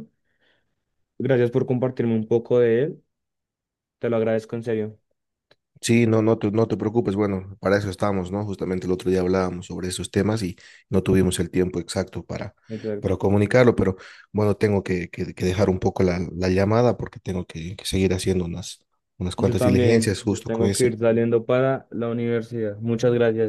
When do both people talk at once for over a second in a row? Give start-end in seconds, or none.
19.4-21.0